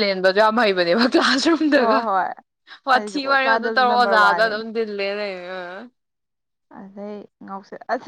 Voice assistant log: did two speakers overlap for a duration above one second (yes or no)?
yes